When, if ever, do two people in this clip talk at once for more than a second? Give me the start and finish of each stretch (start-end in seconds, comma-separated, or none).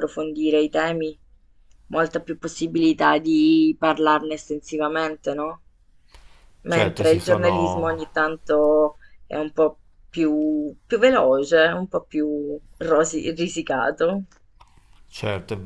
6.7-8.1